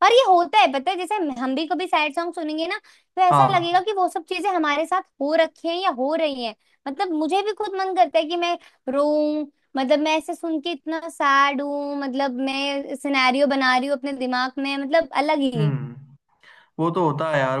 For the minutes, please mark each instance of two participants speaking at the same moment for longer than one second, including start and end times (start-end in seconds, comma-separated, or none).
none